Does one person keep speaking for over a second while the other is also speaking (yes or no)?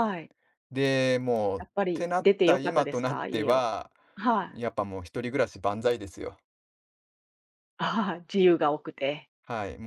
yes